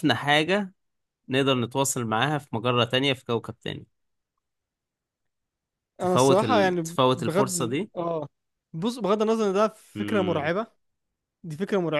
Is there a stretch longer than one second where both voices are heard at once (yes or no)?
yes